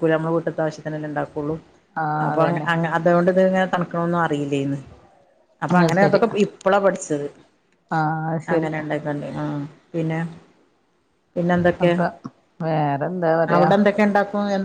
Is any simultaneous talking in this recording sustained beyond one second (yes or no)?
no